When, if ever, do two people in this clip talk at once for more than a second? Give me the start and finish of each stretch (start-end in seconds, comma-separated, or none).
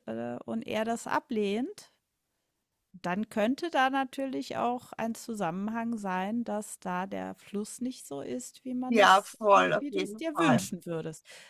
8.9-10.7